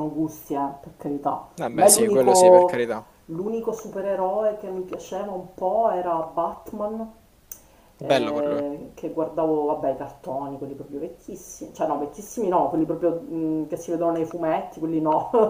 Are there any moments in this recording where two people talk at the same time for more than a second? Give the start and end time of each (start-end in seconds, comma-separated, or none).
1.5-2.9